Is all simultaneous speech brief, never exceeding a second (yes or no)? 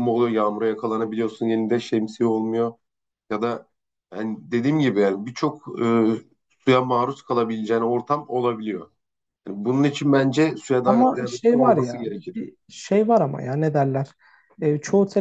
no